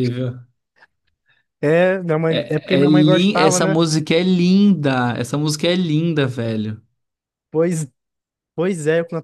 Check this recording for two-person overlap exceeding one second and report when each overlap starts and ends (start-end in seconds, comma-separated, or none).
2.3-3.8